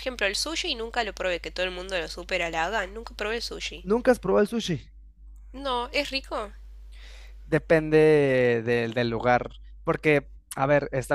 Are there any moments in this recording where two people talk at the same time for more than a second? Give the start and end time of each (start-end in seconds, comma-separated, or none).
none